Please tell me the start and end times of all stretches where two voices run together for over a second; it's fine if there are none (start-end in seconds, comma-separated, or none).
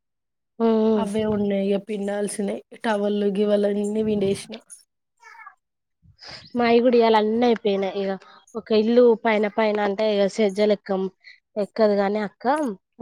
none